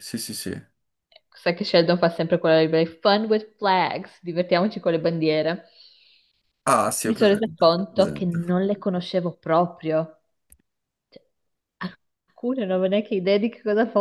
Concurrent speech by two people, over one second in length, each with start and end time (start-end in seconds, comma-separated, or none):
7.0-8.5